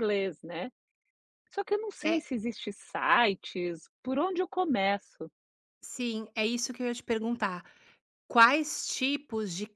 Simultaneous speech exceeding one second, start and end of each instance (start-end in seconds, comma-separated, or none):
none